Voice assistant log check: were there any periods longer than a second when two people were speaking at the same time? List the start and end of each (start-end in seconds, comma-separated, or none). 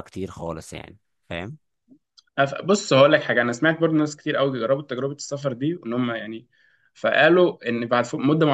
none